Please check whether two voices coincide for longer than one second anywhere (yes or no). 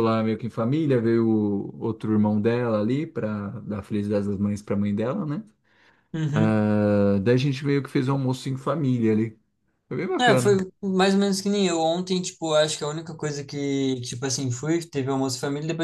no